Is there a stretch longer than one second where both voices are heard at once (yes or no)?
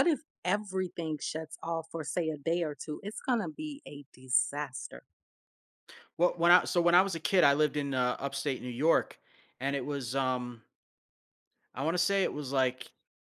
no